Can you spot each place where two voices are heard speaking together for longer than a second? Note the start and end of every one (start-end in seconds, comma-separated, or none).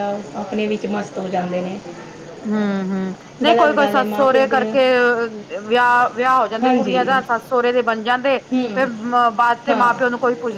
3.5-4.7